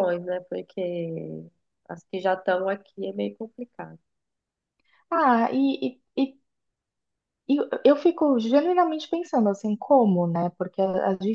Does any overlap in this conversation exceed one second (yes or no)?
no